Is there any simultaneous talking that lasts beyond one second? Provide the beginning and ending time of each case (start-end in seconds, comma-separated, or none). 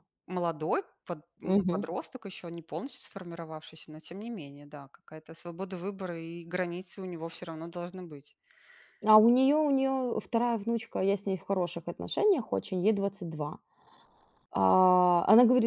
none